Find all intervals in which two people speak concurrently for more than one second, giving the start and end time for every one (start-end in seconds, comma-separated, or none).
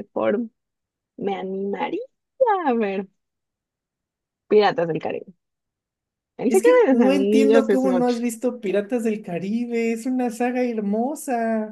6.5-8.2